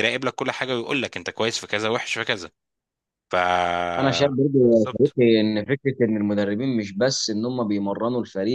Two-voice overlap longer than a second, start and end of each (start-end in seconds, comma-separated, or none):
none